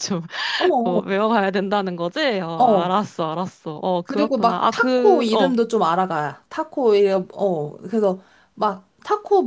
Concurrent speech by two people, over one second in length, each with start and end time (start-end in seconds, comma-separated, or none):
4.0-5.5